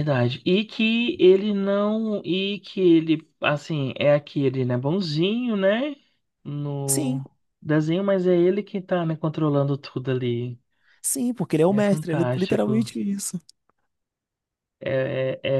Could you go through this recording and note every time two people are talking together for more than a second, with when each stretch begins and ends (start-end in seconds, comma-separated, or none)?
11.7-12.9